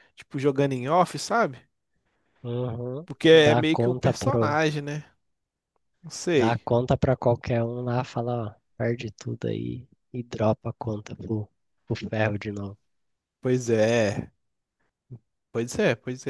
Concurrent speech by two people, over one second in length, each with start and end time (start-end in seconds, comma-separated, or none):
3.1-4.6